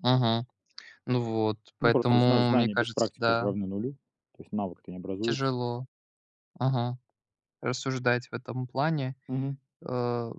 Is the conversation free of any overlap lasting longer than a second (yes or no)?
no